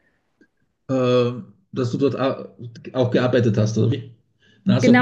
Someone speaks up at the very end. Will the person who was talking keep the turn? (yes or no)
no